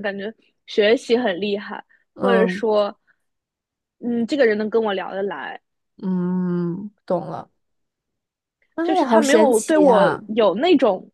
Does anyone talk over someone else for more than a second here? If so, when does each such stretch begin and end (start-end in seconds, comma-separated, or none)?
8.8-10.2